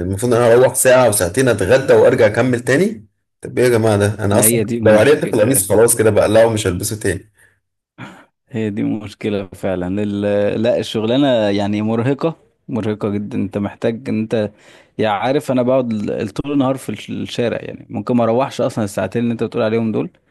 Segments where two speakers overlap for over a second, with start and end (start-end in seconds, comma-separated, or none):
4.3-5.7